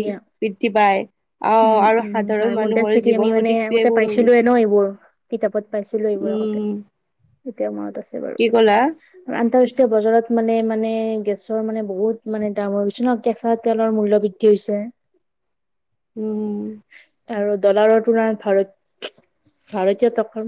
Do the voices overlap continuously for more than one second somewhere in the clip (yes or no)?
yes